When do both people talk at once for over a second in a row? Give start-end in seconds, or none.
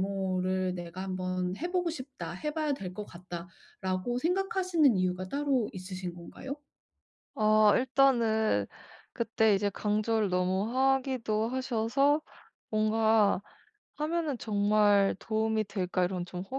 none